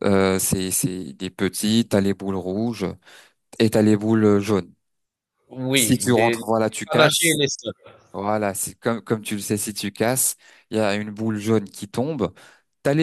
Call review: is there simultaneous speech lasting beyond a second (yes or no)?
yes